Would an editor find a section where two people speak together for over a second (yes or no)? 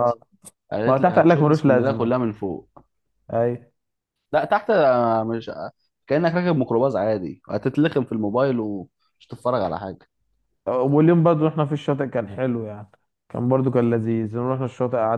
yes